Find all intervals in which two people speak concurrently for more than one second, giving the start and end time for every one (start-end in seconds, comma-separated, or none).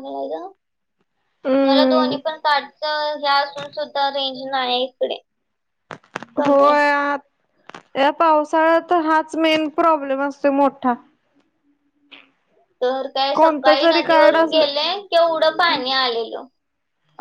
13.3-14.7